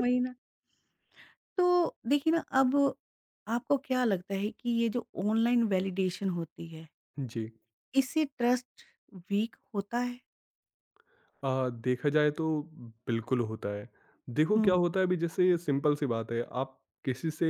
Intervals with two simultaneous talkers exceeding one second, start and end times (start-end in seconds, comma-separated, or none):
none